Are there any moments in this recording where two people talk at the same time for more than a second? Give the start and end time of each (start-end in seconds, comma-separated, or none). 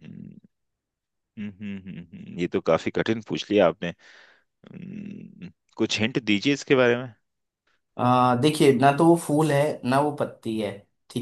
none